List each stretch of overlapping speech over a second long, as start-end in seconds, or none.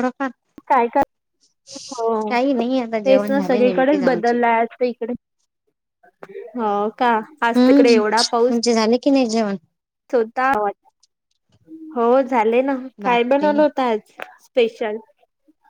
3.0-4.3